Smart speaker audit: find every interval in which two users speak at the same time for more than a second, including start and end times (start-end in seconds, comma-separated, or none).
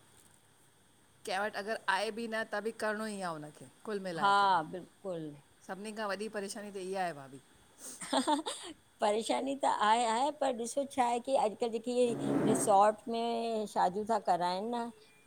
none